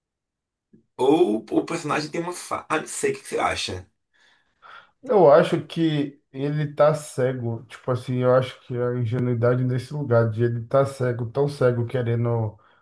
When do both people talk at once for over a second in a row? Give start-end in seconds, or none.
none